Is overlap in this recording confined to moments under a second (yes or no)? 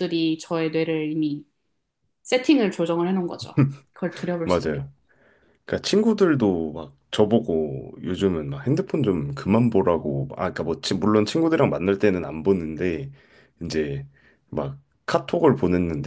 yes